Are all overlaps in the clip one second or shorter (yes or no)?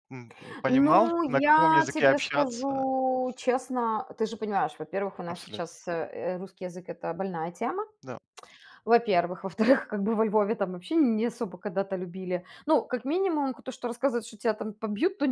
no